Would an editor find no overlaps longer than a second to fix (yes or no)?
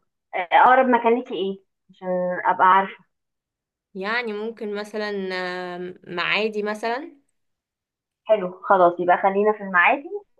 yes